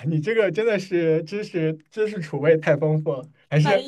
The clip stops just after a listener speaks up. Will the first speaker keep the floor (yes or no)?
yes